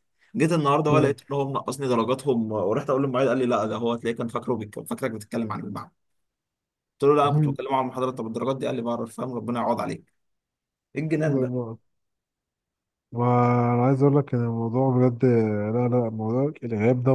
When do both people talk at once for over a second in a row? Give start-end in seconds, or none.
none